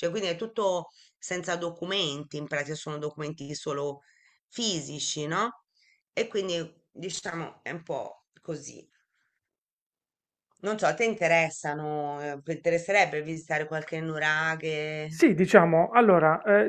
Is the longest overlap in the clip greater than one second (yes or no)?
no